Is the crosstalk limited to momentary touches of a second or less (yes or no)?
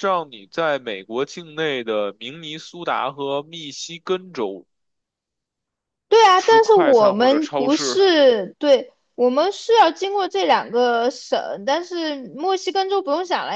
no